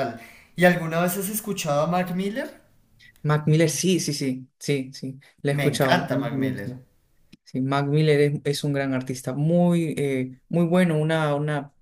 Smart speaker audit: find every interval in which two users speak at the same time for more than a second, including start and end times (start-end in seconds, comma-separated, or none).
5.5-6.7